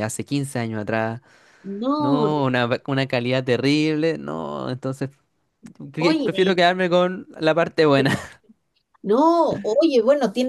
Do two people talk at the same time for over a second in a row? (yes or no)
no